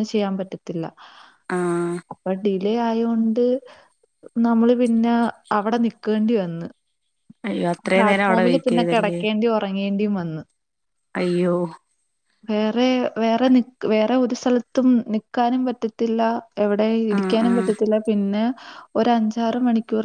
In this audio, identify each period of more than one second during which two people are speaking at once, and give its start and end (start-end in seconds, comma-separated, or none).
7.9-9.2